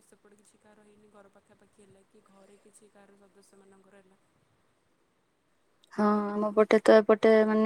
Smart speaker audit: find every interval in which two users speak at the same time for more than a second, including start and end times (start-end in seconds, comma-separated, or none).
none